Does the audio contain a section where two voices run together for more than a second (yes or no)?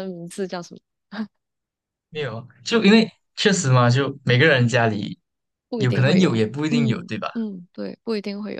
yes